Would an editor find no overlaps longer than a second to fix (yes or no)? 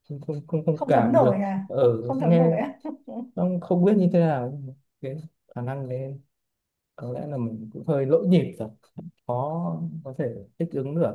no